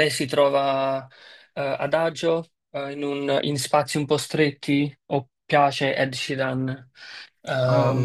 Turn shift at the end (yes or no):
yes